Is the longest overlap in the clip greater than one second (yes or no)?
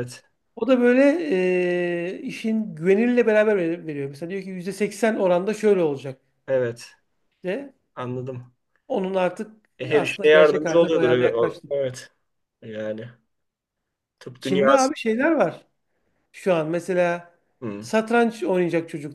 yes